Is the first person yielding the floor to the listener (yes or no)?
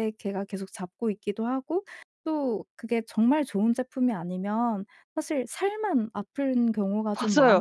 yes